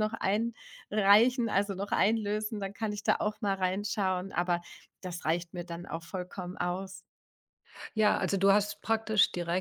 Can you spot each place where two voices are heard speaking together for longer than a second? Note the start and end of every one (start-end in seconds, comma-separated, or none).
none